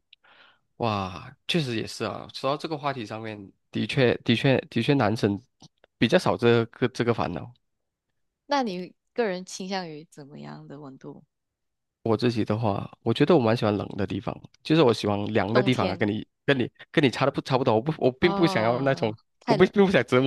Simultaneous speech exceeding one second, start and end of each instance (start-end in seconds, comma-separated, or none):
18.2-19.7